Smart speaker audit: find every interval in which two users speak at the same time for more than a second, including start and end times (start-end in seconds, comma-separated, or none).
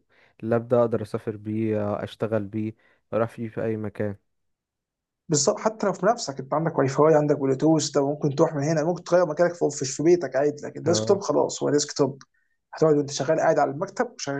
none